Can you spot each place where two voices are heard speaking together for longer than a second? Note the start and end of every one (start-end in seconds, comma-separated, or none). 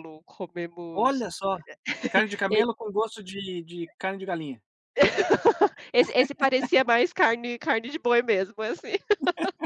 none